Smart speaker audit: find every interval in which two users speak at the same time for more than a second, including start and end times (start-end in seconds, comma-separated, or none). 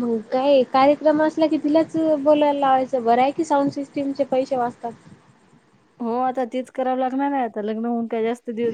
none